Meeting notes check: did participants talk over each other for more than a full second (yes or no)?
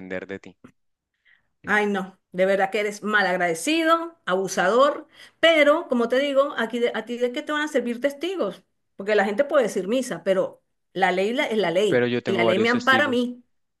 yes